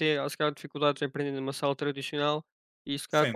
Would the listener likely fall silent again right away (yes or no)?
yes